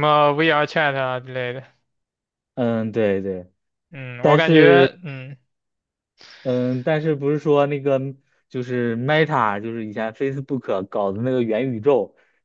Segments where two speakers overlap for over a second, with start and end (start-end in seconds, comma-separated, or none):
none